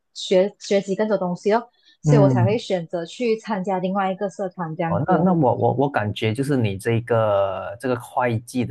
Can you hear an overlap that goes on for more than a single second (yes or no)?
no